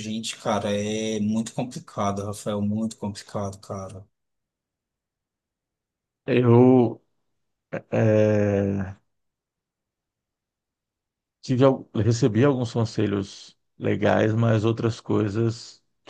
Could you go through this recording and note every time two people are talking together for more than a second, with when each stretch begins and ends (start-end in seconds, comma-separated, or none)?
none